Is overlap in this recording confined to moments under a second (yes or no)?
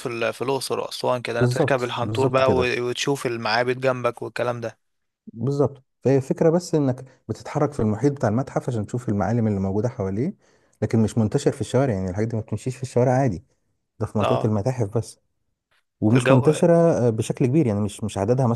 no